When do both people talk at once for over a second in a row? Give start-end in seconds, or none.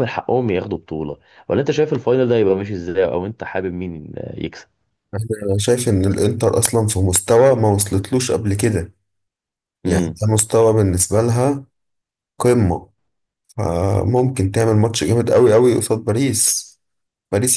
none